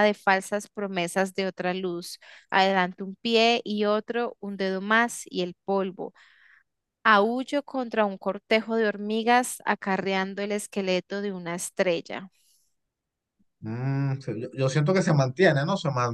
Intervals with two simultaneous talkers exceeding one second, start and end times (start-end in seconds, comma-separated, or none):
none